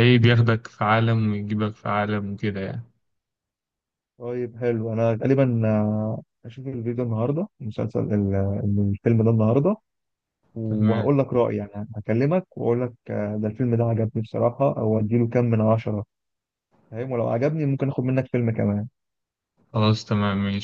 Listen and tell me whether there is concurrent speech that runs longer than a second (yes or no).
no